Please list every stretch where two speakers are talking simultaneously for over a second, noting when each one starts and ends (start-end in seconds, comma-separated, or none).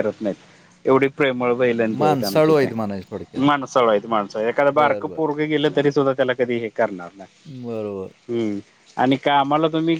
2.0-3.4